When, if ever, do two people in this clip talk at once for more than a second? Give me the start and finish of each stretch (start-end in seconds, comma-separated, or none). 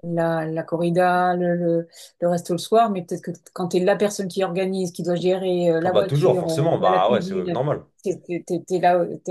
5.8-7.6